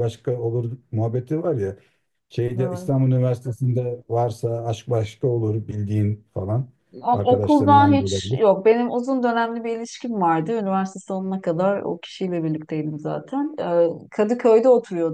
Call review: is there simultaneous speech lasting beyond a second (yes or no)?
yes